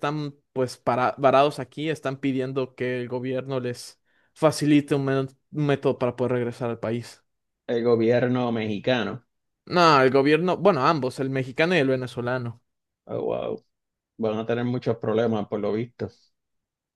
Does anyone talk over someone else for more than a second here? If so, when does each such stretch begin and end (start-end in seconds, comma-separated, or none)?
none